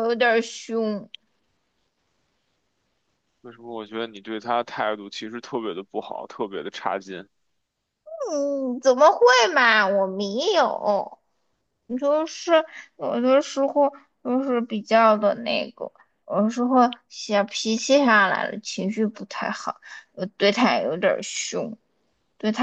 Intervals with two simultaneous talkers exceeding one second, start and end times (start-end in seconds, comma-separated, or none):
none